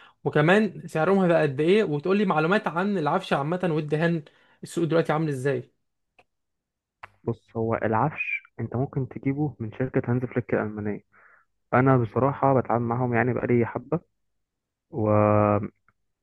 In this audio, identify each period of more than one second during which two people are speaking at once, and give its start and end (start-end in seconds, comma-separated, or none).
none